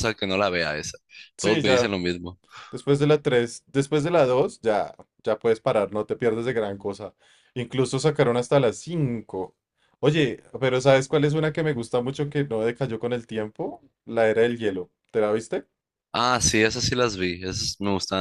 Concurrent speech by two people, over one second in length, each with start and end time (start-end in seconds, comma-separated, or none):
none